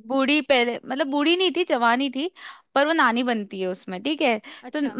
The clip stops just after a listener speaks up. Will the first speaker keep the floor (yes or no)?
yes